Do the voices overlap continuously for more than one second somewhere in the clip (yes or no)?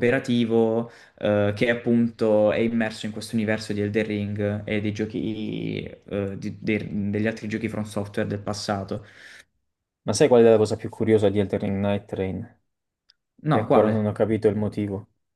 no